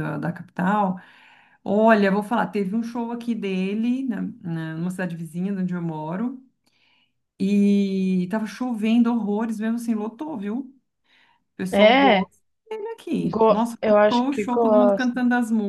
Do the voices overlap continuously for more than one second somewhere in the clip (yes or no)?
yes